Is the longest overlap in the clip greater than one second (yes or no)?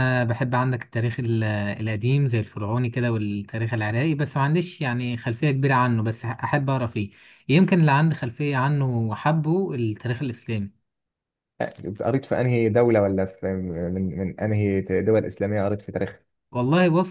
no